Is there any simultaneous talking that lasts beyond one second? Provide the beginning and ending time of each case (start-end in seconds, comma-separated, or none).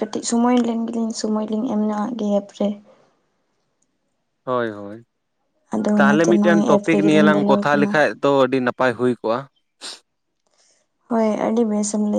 6.0-7.9